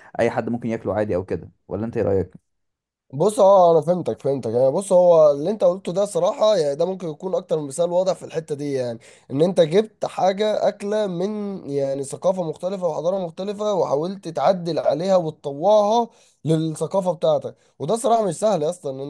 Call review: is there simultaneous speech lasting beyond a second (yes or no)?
no